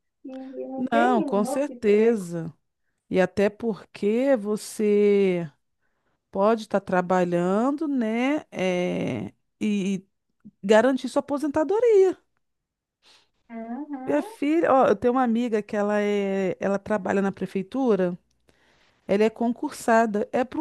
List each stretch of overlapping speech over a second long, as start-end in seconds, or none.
0.8-2.3